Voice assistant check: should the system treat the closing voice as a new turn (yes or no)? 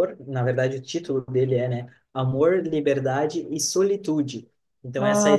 no